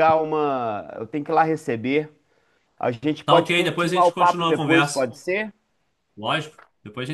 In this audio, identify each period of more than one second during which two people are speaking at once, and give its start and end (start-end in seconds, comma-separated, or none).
3.2-5.1